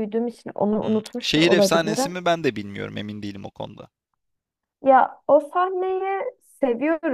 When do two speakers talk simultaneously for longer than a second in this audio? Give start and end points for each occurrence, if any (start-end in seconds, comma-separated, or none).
0.8-2.1